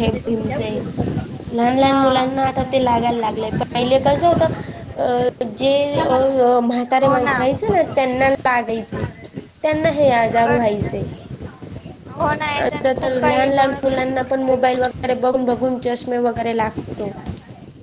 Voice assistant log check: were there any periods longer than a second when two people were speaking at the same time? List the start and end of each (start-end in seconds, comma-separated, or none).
12.6-14.2